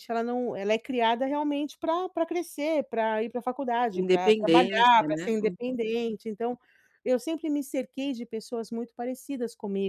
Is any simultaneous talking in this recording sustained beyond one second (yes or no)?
yes